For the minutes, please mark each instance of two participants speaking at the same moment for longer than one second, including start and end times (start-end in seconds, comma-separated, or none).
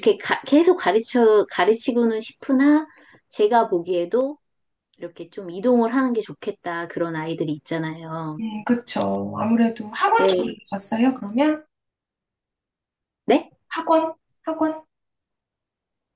none